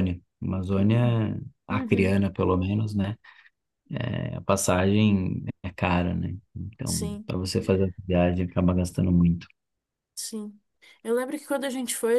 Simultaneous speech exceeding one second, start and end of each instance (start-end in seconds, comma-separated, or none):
none